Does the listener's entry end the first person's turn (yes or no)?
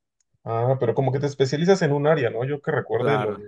no